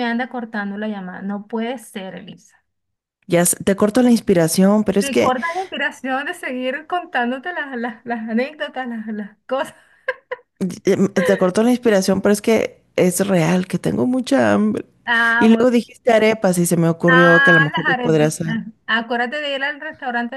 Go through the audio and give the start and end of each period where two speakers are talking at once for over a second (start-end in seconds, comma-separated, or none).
17.1-18.6